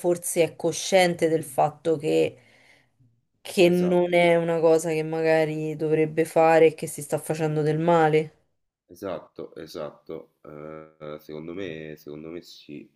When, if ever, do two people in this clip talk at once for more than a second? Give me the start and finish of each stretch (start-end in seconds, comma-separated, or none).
none